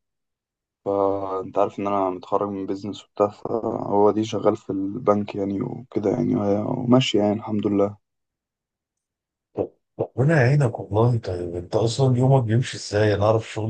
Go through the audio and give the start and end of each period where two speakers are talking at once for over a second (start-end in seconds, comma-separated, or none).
none